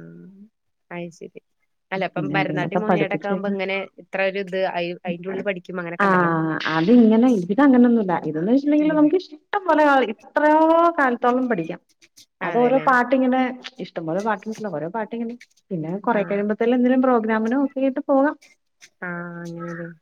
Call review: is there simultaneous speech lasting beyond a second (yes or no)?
yes